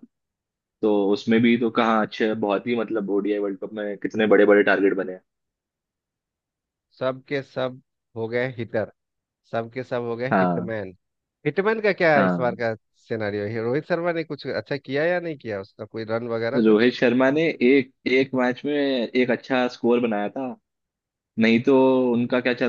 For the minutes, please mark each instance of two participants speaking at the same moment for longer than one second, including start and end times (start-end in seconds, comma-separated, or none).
none